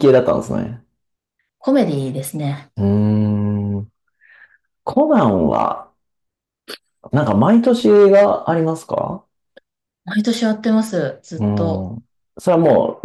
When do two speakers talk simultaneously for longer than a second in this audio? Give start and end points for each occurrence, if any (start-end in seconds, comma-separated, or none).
none